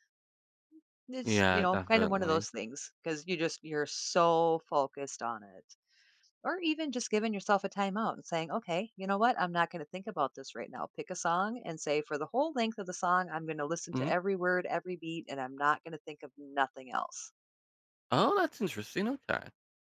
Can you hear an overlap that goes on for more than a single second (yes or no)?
yes